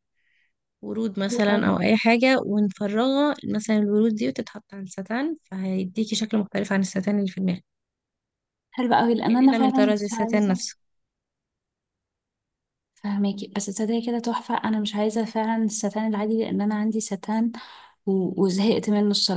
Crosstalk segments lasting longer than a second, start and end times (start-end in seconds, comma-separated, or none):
9.3-10.6